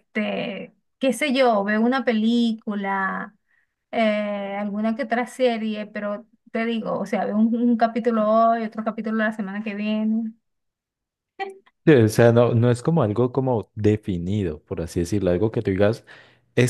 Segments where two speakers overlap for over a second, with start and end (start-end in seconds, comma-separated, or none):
none